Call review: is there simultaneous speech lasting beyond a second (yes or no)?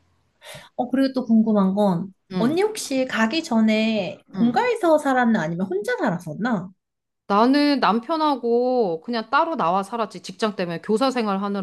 no